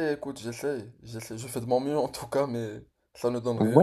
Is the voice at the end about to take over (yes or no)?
yes